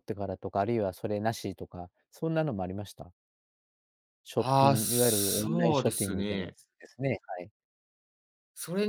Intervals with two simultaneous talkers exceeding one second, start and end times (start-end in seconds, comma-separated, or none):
4.4-6.5